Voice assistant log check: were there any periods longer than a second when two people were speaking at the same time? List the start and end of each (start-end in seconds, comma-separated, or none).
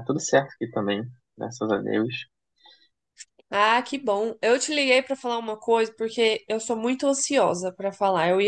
none